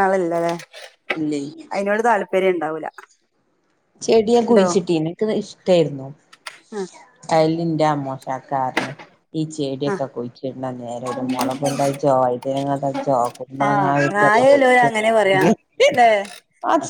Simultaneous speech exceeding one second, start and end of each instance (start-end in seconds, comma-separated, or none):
13.7-15.4